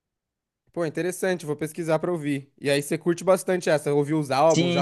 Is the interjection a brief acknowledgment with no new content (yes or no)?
no